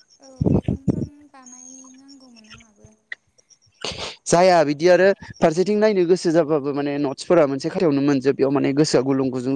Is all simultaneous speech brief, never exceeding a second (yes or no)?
yes